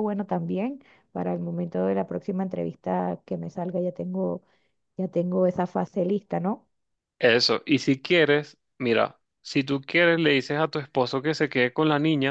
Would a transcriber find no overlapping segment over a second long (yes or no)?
yes